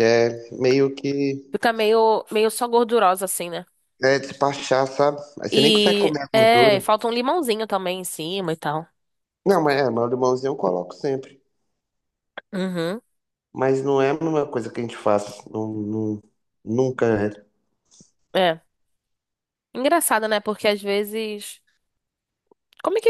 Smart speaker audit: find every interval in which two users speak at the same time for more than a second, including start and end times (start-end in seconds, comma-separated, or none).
5.5-6.8